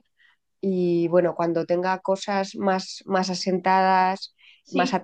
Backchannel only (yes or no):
yes